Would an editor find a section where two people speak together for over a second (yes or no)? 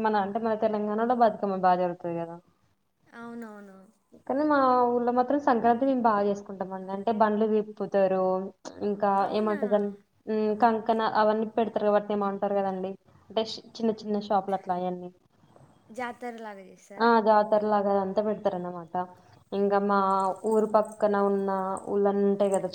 no